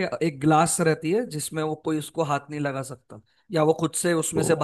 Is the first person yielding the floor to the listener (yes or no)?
no